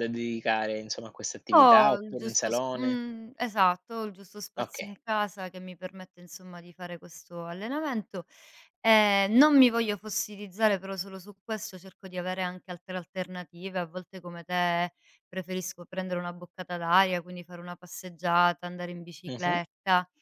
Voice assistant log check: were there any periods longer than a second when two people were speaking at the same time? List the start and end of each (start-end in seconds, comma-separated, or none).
1.5-3.0